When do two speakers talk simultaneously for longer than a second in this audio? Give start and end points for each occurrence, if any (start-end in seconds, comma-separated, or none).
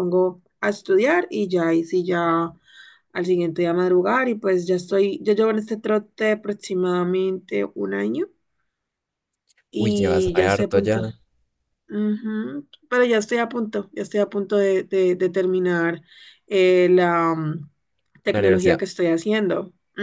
9.8-11.0